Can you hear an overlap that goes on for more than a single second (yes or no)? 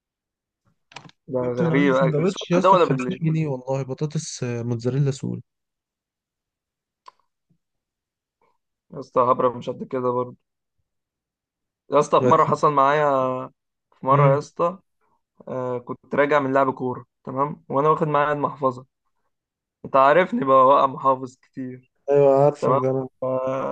yes